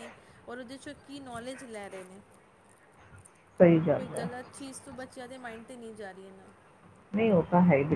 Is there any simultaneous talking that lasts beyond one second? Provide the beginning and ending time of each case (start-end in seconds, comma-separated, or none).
none